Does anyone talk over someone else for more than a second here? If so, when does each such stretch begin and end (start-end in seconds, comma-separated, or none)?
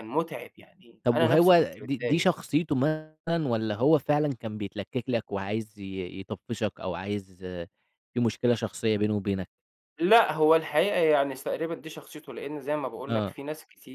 1.0-2.3